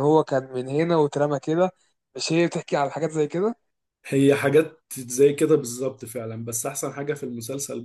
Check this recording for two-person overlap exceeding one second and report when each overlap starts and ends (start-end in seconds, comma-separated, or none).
none